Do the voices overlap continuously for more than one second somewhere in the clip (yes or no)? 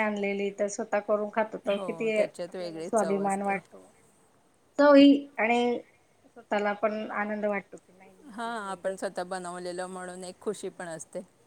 yes